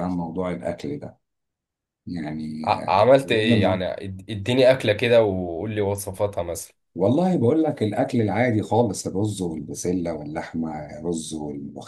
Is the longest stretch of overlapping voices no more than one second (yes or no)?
no